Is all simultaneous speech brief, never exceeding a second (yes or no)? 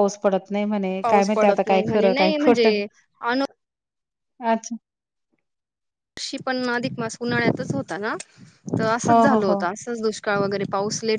no